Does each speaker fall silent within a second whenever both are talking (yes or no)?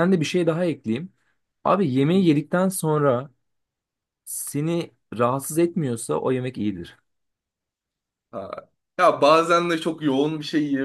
yes